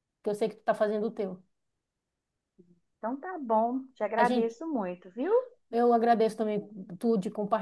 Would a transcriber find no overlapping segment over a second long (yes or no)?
yes